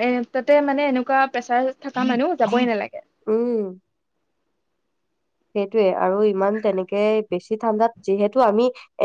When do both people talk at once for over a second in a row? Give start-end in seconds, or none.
none